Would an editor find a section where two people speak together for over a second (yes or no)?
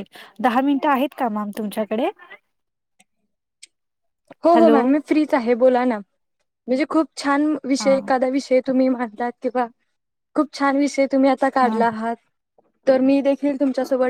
no